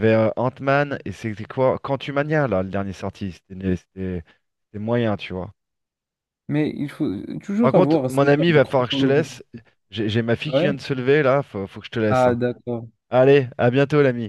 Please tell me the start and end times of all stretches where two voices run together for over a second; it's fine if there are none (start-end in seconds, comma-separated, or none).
7.6-9.3